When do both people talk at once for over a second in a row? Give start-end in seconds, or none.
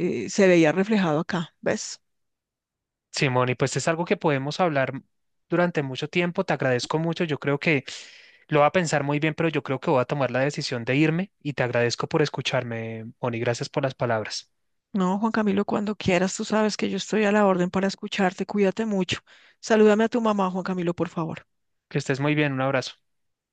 none